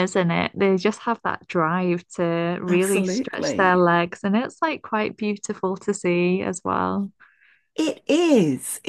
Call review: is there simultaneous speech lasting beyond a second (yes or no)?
yes